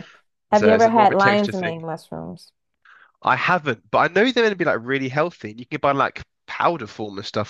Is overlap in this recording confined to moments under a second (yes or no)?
no